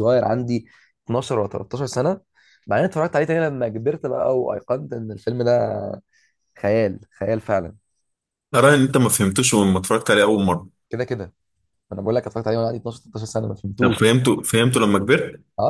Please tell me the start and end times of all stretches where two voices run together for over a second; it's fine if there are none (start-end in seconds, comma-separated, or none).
none